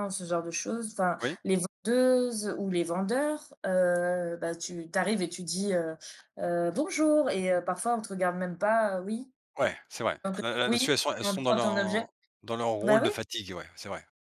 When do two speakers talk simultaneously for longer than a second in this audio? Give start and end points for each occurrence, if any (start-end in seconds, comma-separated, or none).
10.2-12.1